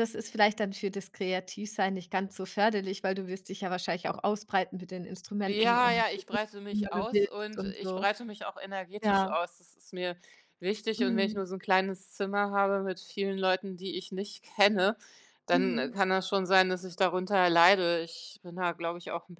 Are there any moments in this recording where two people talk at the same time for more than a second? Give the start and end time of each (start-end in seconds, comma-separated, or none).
6.7-8.0